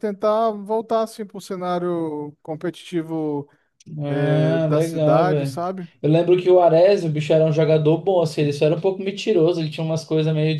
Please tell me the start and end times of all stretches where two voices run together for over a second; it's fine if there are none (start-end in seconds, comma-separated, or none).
4.1-5.9